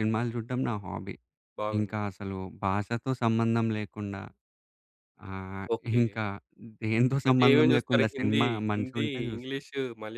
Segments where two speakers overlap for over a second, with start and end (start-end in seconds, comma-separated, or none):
7.3-9.6